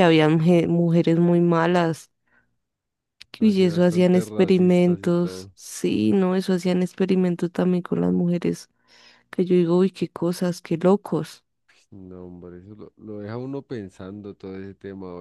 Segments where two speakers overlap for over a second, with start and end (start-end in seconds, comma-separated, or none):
3.4-5.5